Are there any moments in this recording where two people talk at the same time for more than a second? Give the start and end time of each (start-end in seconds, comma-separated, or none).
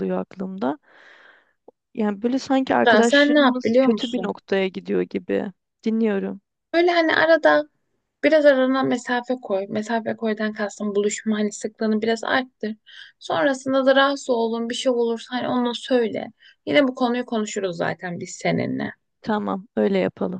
2.9-4.4